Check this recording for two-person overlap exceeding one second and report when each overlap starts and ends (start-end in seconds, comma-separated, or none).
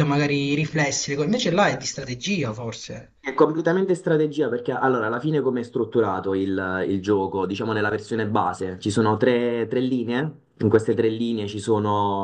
none